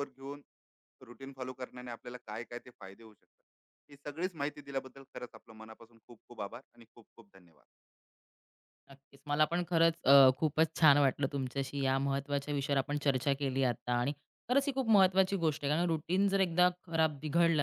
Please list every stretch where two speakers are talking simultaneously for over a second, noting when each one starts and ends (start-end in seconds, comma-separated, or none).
none